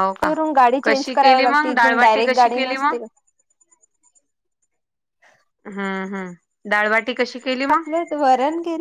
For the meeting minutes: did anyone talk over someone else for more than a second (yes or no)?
yes